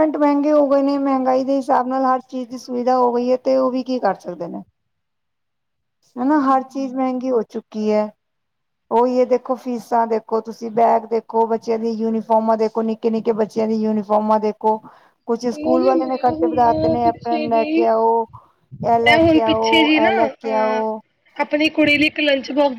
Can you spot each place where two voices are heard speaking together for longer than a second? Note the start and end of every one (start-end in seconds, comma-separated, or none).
15.5-17.8, 19.1-20.8